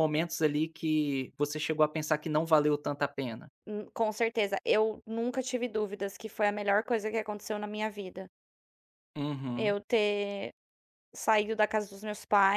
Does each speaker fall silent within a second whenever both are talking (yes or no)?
yes